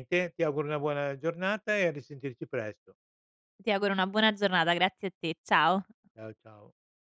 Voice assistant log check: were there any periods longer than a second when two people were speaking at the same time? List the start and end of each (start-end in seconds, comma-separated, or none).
none